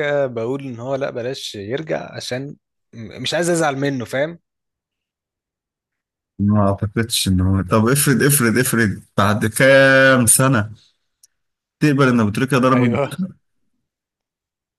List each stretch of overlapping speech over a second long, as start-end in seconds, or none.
none